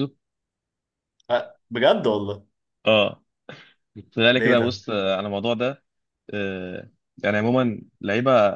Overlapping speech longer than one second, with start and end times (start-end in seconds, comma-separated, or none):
none